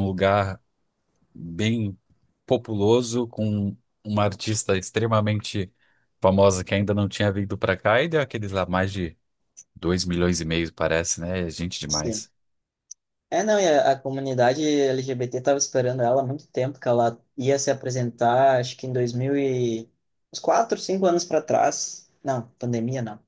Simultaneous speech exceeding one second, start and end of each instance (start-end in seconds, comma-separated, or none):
none